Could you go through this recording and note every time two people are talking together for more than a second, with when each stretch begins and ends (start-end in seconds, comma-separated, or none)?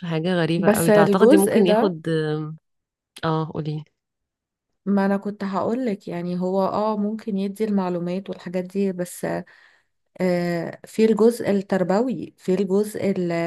0.6-2.0